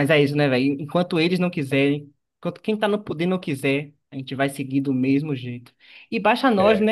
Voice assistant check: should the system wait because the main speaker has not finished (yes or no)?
yes